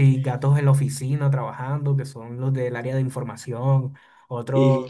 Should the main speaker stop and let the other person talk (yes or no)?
no